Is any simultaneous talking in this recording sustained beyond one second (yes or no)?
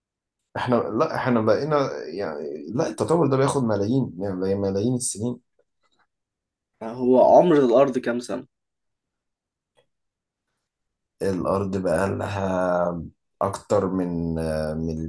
no